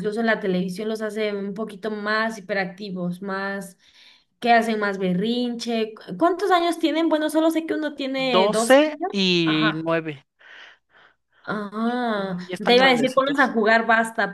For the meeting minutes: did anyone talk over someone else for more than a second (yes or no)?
yes